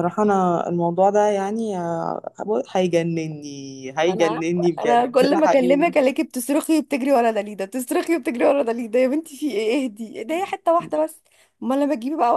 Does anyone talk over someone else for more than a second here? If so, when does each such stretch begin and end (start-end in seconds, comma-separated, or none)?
4.1-5.8